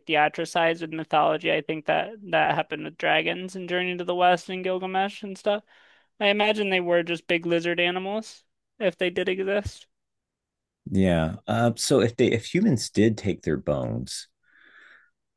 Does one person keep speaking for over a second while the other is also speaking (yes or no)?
no